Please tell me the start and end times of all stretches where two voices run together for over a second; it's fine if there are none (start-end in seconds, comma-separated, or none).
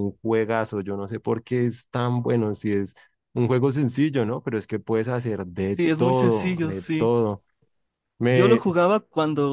5.5-7.1